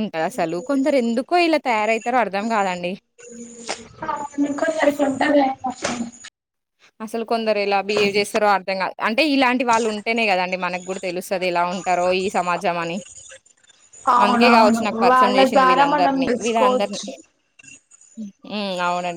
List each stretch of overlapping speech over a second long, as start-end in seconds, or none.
14.2-17.0